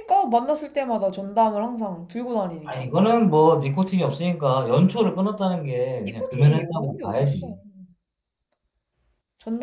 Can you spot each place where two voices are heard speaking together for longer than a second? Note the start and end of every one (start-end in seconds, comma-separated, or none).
6.1-7.5